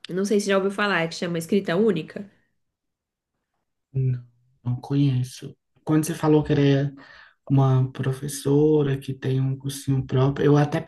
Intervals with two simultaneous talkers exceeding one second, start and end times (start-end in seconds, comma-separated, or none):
none